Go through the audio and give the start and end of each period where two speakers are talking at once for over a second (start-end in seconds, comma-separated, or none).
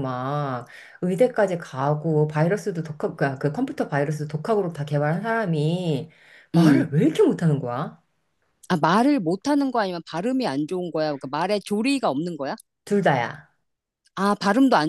none